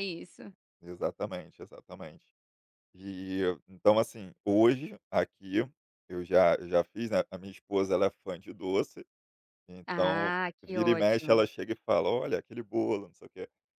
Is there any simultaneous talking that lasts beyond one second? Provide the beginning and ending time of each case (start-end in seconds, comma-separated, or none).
9.9-11.4